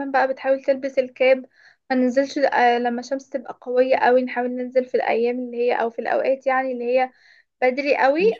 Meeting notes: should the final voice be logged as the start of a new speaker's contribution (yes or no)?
no